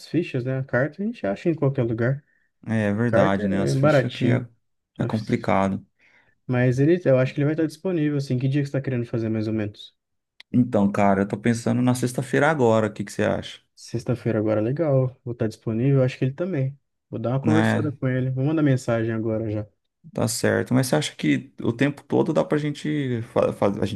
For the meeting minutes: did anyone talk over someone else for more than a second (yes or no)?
yes